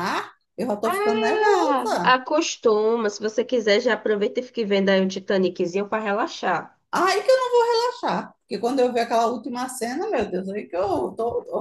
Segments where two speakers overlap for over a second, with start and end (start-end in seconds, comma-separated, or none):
0.8-2.2